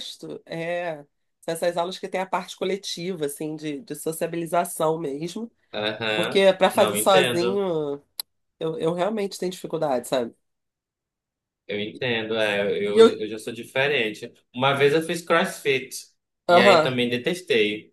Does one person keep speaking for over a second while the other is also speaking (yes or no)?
yes